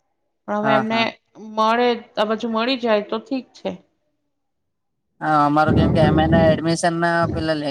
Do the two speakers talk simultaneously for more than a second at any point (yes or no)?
no